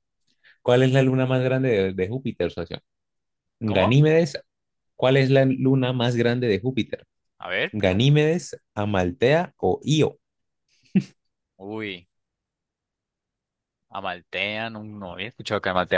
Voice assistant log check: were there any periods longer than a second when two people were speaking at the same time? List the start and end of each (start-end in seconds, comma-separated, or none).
none